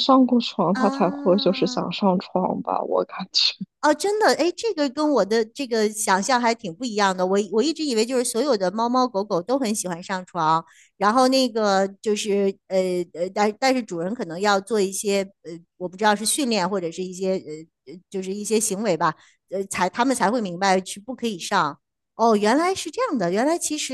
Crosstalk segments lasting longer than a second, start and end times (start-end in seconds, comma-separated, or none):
0.7-2.0